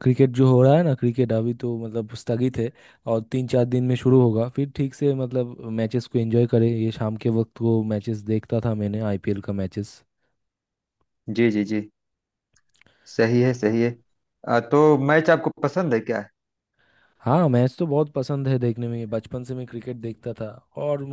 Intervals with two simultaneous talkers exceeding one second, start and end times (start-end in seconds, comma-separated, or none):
none